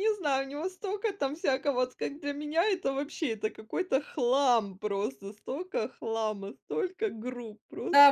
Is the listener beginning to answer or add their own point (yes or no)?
yes